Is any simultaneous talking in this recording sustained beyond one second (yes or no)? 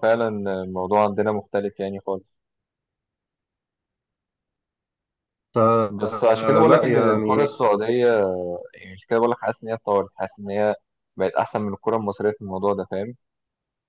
yes